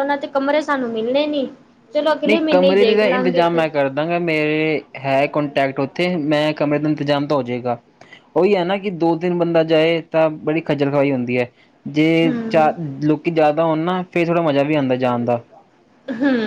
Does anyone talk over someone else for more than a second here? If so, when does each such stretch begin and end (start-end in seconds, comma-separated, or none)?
2.3-3.6